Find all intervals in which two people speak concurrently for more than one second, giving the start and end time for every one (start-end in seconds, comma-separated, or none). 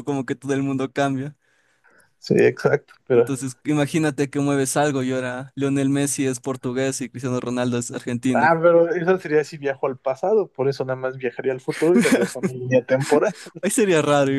none